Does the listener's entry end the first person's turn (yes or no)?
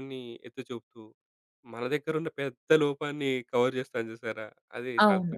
yes